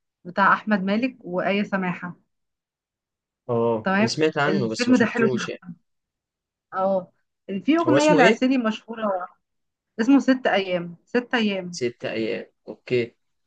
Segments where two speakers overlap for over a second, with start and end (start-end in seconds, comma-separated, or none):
3.8-5.5